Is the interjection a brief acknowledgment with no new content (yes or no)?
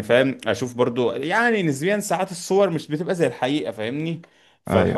yes